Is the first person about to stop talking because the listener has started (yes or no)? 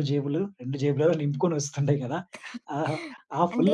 yes